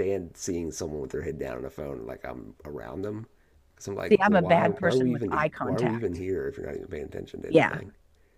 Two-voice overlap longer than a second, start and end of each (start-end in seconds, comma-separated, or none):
4.1-6.2